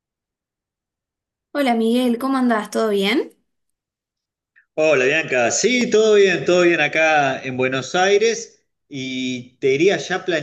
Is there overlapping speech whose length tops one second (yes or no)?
no